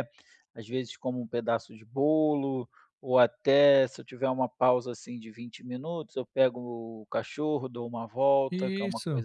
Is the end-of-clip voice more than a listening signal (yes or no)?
no